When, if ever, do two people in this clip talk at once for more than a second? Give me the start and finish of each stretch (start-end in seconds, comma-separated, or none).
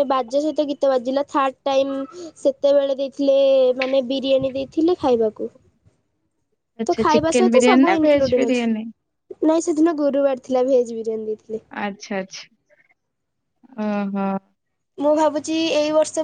6.9-8.8